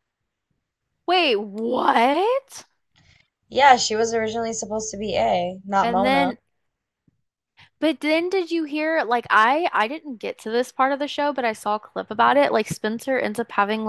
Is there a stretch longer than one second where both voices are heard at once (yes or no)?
no